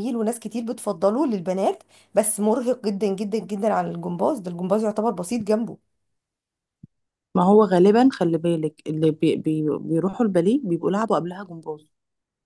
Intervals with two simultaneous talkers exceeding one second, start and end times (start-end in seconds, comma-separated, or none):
none